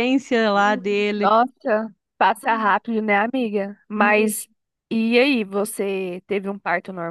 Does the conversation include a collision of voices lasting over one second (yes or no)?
no